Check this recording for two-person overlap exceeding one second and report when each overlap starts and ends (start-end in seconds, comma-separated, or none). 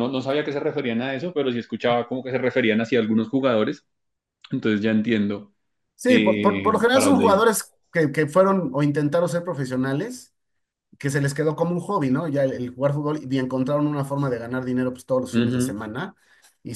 6.1-7.5